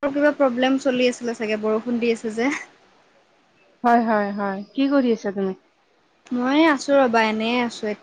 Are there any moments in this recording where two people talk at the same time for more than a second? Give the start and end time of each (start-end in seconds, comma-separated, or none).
none